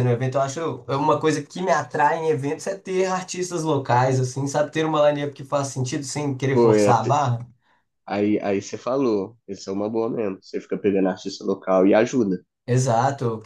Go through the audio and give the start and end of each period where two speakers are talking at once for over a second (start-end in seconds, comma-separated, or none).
none